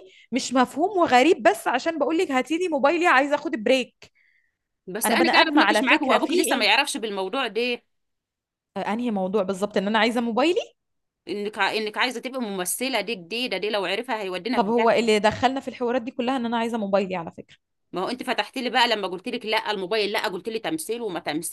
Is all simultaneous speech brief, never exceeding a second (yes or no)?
no